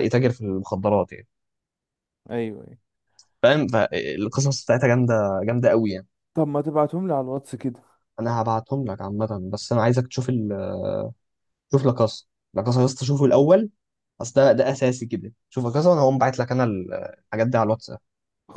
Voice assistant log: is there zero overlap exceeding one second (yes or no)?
yes